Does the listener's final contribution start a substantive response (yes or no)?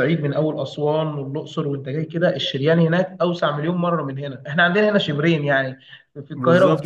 no